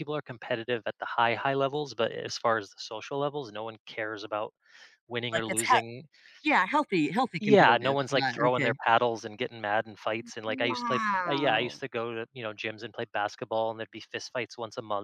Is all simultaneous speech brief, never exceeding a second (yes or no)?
no